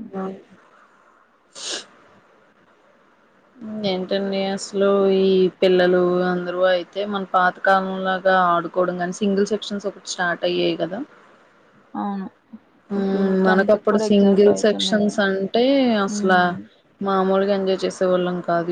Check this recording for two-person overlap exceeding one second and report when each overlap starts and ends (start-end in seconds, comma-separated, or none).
13.0-15.2